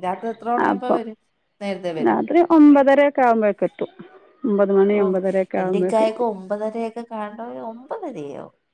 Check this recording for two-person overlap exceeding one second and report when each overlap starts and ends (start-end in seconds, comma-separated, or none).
none